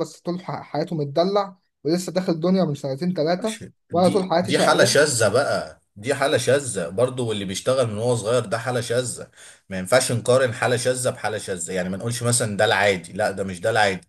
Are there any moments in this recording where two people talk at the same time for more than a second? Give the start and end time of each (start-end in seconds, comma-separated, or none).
3.4-5.0